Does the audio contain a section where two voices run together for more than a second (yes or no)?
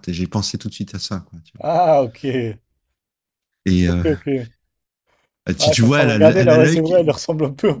yes